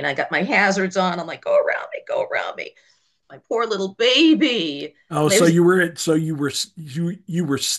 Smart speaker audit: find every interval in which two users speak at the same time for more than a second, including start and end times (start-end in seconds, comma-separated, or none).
none